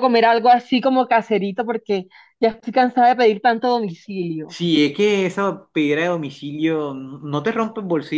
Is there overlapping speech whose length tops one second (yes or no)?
no